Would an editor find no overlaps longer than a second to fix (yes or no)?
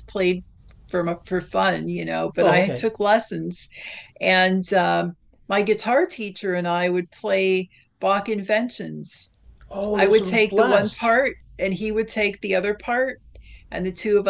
no